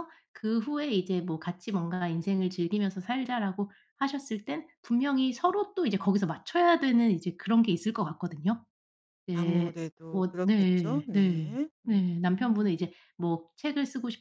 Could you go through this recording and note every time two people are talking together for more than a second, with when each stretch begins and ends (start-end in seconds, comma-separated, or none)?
9.3-12.8